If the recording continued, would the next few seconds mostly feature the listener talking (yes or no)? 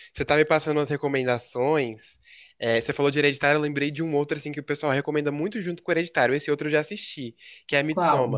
no